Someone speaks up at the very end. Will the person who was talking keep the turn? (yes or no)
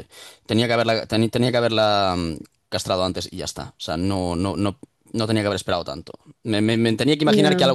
yes